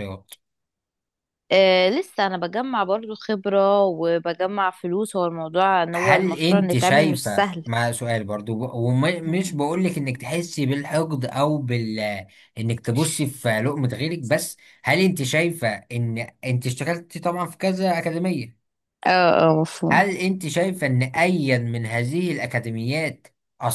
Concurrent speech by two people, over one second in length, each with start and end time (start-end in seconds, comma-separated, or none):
5.9-7.7